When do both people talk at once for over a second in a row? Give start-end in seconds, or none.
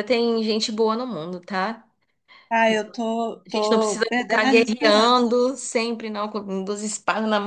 3.5-5.4